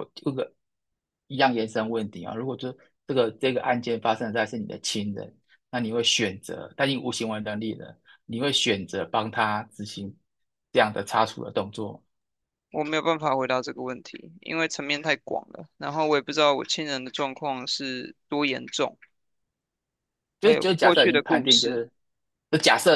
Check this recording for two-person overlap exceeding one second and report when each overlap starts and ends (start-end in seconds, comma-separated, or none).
20.4-21.8